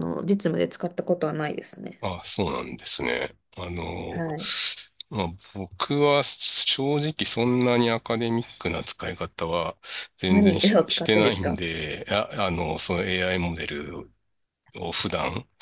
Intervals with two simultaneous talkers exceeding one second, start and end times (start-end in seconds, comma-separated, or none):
10.3-11.6